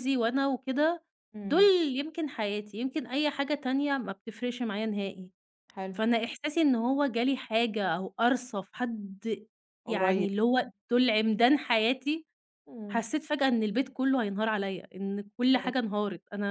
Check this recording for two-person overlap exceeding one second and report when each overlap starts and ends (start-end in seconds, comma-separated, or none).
none